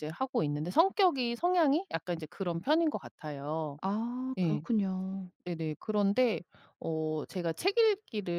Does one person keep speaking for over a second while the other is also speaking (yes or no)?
no